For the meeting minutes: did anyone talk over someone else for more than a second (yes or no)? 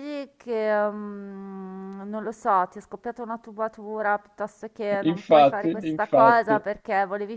yes